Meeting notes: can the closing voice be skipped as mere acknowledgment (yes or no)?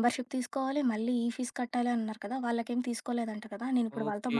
no